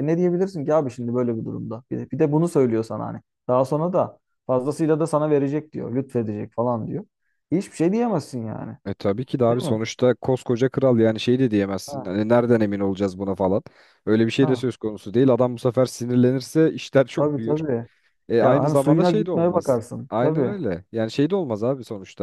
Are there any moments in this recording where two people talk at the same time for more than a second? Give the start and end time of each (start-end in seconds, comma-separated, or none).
18.4-20.5